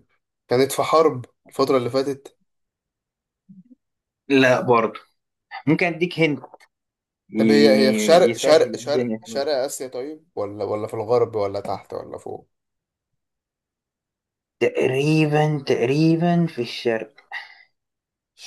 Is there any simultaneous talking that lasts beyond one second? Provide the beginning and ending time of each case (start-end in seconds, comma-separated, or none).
7.4-9.5